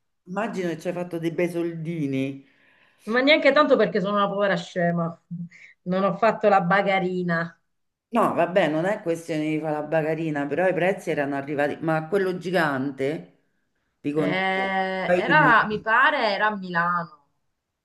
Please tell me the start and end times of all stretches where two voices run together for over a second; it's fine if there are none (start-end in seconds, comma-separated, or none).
14.2-15.7